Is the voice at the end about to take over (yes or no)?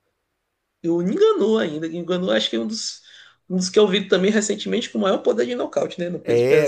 yes